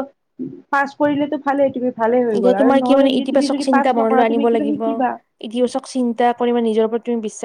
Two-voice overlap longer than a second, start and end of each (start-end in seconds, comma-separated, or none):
2.4-4.8